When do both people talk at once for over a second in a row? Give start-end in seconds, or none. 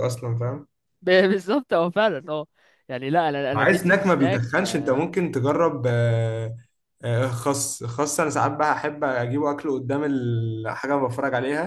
3.5-5.1